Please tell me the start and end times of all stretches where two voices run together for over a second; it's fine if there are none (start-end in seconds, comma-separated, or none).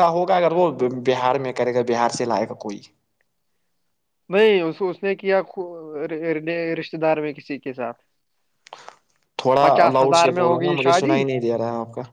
9.6-11.2